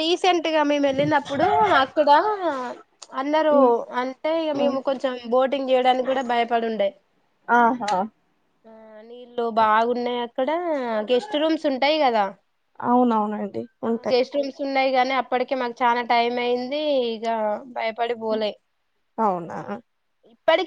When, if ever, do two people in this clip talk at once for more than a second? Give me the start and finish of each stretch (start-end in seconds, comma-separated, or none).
none